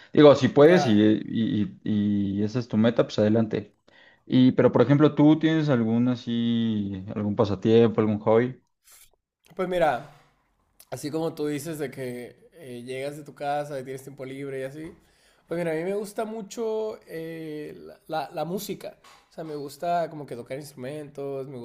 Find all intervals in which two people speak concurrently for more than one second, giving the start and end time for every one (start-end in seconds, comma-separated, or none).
none